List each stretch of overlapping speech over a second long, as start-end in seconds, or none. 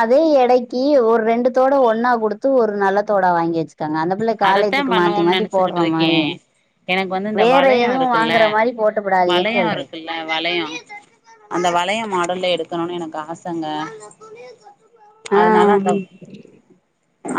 4.5-6.1